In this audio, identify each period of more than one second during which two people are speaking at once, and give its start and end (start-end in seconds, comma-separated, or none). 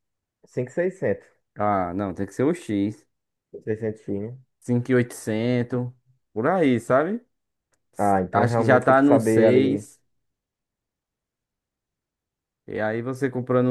8.3-9.8